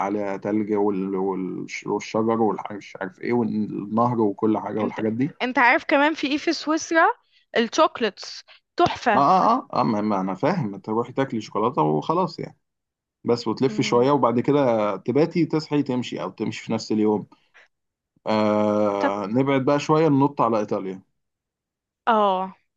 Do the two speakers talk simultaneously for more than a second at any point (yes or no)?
no